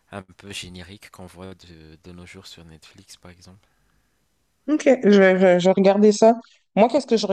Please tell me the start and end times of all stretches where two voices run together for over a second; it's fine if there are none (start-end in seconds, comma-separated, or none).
none